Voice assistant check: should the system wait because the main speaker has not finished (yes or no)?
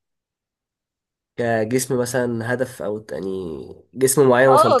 no